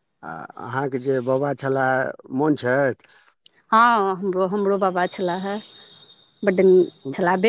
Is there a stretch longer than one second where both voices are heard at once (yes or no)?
no